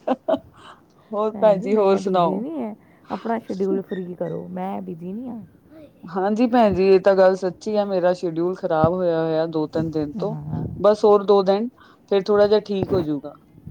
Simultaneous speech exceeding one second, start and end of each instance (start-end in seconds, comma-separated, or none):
none